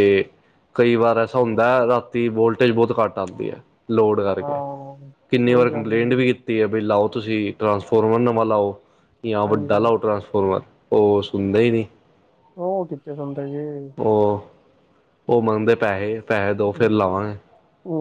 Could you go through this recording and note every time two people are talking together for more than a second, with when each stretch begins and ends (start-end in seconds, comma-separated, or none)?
none